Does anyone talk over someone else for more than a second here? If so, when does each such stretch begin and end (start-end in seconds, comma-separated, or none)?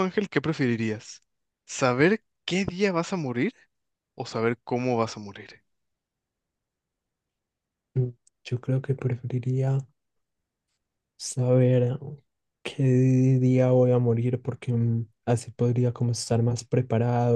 none